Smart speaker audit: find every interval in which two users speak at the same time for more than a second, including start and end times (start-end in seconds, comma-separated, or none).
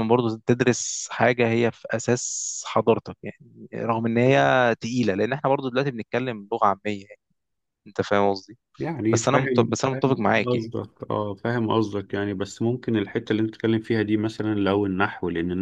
9.1-10.7